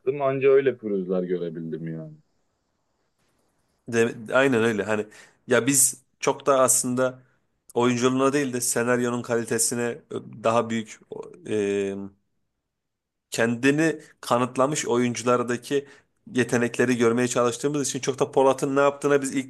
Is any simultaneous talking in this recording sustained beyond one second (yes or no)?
no